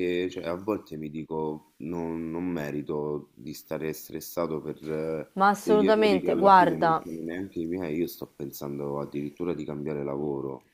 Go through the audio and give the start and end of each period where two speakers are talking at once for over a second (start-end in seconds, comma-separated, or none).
5.3-7.0